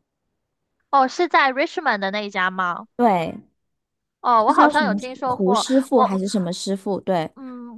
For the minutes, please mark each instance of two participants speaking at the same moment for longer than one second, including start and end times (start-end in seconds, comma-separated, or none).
4.4-6.2